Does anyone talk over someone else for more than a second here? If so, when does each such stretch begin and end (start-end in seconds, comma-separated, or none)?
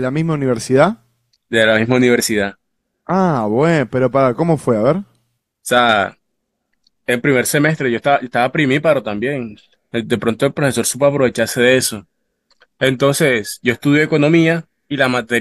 none